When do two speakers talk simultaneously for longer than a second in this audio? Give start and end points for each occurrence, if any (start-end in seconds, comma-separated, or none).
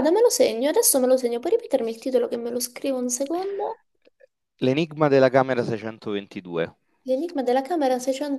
none